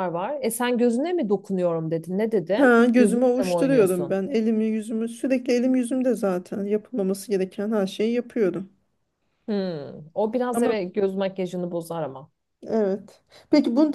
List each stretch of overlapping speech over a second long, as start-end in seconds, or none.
2.6-4.2